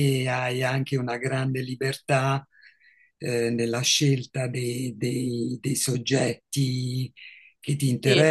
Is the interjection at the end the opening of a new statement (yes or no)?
no